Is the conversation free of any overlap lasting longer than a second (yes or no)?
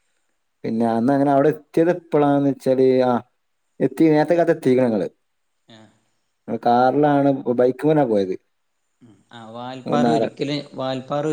yes